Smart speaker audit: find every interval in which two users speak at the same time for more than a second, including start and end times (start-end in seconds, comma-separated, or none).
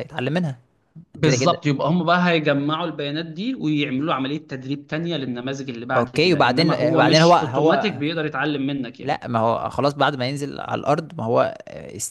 6.0-8.0